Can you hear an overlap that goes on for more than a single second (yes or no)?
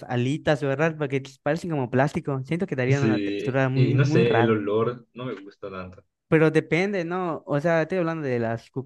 yes